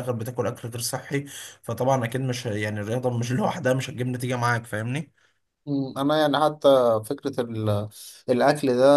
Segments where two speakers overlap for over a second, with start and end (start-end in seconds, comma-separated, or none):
none